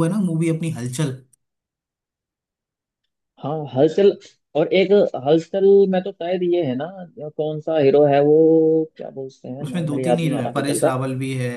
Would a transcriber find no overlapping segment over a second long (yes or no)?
no